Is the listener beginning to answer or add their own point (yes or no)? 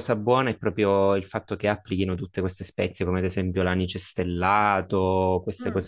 no